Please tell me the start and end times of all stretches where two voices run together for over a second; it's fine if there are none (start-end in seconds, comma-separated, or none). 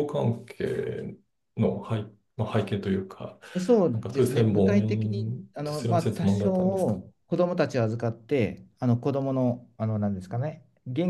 3.9-7.0